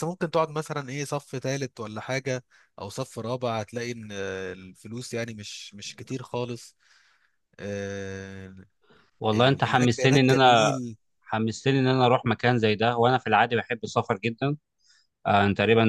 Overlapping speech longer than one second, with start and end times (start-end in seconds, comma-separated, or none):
9.3-10.7